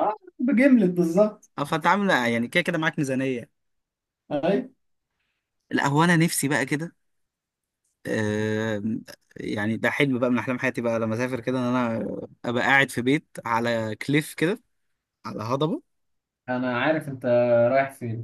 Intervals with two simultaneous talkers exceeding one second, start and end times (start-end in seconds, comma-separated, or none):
none